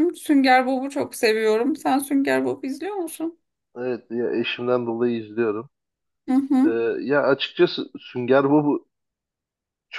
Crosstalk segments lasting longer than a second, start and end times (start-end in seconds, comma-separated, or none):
none